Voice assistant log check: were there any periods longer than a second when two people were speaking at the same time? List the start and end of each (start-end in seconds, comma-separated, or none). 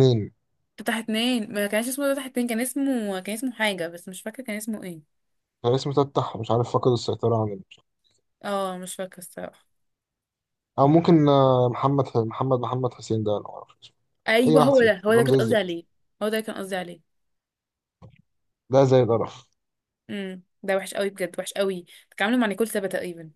14.5-15.8